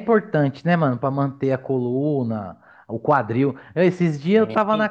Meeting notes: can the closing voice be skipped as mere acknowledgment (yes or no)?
yes